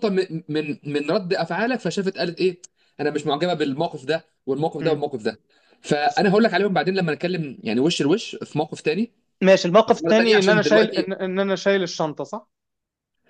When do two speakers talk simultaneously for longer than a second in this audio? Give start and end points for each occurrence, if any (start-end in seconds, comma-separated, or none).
9.9-11.1